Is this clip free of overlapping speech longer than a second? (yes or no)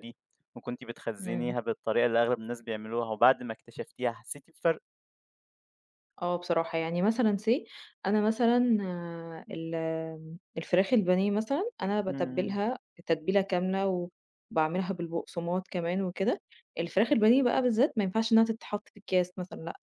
yes